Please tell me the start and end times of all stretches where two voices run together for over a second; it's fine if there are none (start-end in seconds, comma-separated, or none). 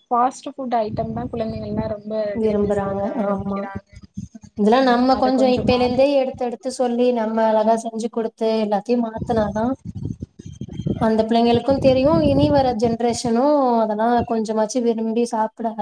none